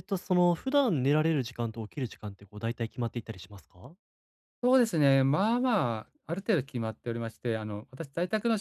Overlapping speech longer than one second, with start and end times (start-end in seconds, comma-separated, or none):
none